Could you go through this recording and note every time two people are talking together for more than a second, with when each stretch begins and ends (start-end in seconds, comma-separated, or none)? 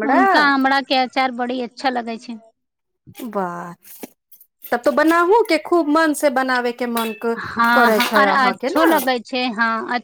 7.4-8.9